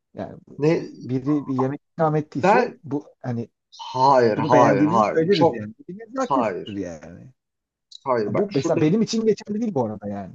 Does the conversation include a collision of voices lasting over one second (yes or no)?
yes